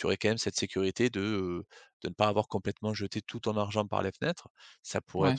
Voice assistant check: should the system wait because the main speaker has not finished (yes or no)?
yes